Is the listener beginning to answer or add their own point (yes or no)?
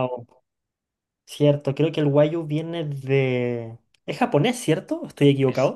yes